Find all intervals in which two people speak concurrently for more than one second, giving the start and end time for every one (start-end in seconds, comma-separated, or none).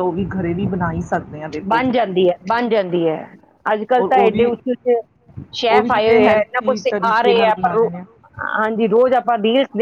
5.7-7.9